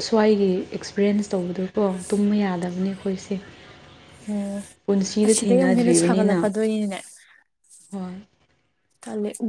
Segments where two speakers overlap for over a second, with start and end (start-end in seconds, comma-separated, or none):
5.3-6.5